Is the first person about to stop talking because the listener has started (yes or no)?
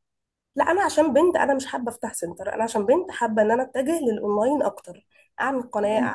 no